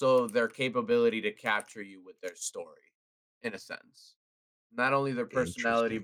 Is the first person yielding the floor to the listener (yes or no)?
no